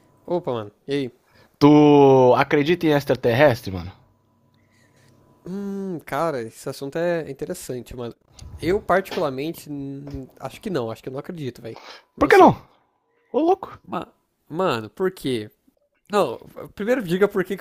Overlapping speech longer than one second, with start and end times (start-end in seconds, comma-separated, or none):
none